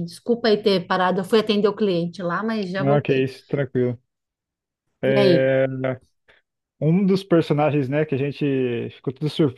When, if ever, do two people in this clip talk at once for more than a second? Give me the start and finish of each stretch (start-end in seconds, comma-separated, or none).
none